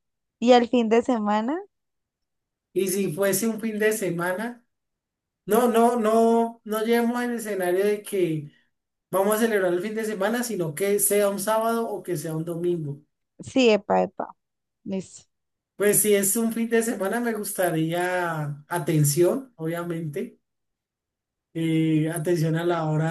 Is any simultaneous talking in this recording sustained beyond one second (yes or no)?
no